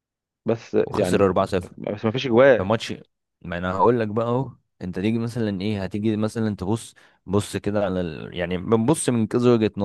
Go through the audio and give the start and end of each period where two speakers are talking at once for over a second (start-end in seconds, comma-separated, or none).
none